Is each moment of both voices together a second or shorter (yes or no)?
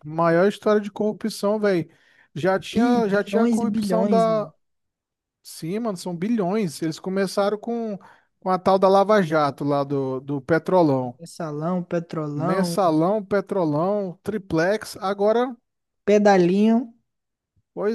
no